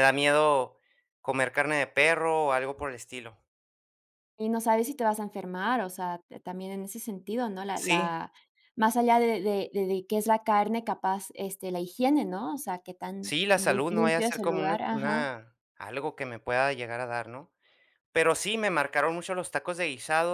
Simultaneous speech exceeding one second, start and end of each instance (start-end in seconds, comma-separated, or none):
13.2-15.3